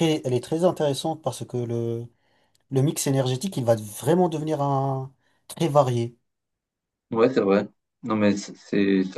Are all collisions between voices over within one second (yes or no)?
yes